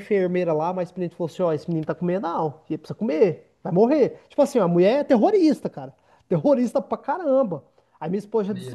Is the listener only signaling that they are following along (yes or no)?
yes